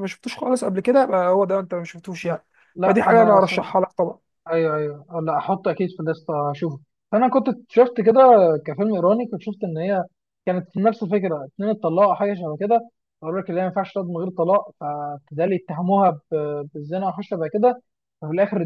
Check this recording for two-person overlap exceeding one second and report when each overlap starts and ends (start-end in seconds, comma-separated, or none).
none